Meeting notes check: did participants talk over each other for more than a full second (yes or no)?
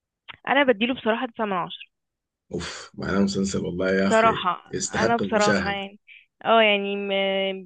yes